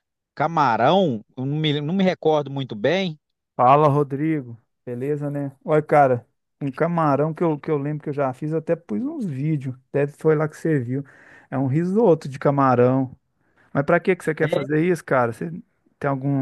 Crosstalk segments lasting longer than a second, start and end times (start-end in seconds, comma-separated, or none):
none